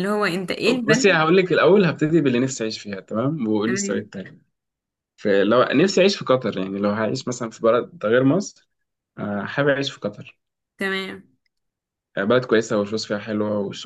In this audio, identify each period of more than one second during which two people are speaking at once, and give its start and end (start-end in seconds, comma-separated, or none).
none